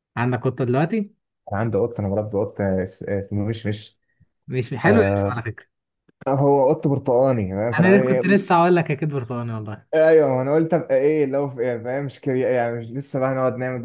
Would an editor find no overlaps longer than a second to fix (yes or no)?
yes